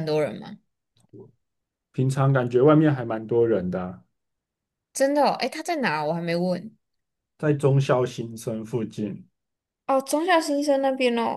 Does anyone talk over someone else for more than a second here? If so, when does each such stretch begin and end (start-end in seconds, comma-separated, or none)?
none